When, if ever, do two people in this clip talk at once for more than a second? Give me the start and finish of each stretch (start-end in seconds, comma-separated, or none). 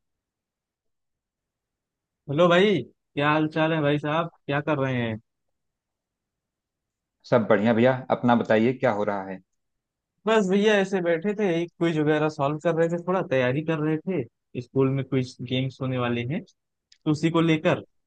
none